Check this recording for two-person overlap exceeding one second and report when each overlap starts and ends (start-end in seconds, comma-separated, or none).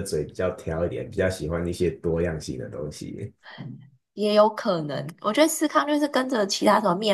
none